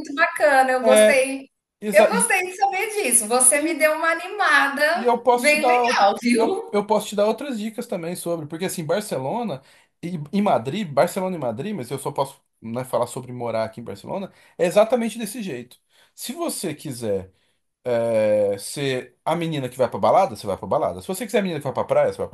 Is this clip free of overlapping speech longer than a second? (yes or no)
no